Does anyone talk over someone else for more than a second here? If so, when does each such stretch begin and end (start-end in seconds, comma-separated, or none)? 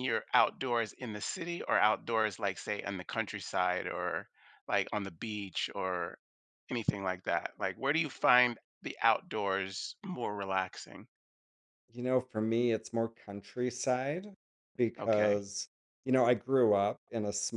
none